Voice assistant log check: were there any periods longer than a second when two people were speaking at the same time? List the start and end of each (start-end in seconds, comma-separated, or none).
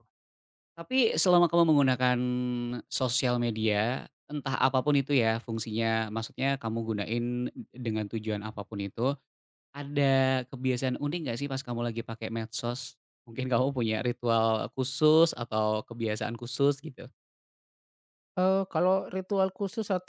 none